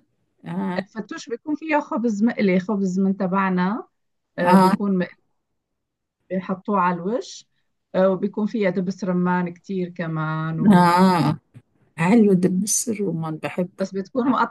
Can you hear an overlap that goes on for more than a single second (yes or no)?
no